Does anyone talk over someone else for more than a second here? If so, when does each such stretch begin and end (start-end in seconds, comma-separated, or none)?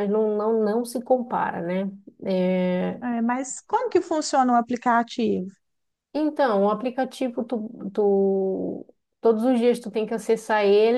none